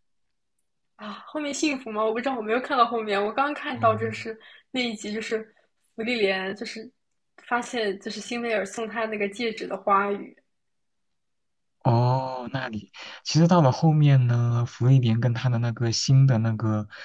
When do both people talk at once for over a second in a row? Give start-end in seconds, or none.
none